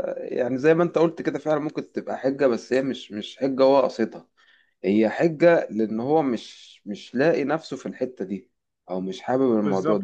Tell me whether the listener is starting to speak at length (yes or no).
no